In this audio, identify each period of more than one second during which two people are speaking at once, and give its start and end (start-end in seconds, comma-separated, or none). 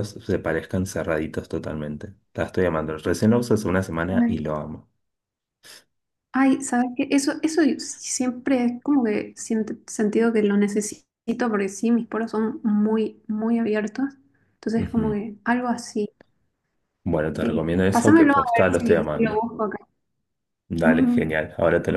17.4-19.4